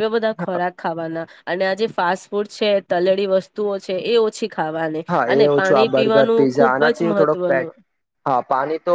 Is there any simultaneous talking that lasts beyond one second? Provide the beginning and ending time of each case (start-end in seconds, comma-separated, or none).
5.1-7.7